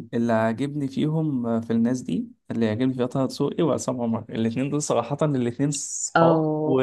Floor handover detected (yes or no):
yes